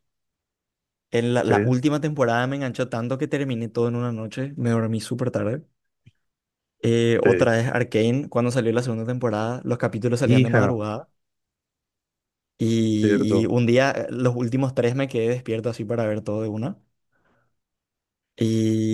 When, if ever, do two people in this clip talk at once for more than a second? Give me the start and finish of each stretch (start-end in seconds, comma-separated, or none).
none